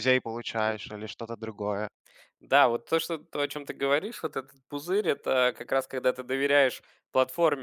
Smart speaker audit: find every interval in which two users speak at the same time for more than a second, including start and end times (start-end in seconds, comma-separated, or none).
none